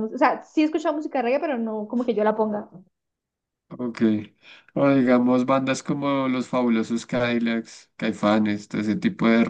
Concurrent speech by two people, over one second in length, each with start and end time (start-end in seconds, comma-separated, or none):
none